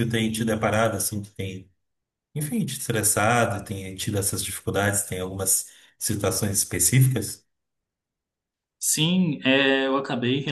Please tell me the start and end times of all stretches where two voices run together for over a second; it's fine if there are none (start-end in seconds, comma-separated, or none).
none